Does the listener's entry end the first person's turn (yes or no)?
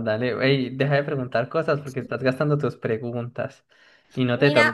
yes